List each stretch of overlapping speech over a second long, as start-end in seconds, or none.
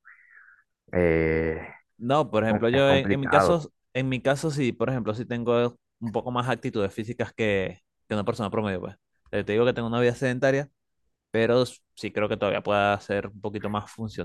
2.4-3.6